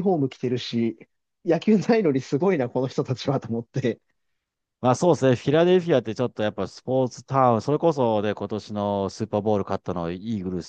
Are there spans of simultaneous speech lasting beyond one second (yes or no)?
no